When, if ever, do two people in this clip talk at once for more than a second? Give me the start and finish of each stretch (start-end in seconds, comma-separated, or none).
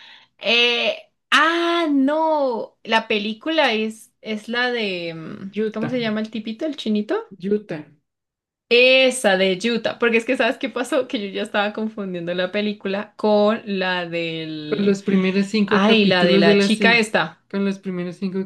15.7-17.1